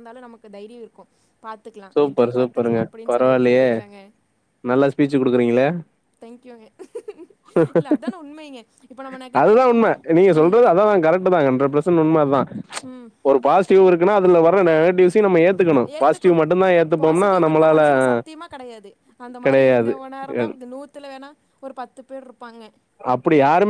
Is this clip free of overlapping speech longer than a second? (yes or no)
no